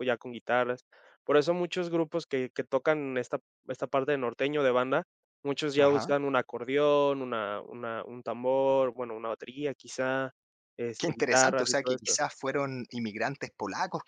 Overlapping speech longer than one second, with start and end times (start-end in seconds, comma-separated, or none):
11.0-12.2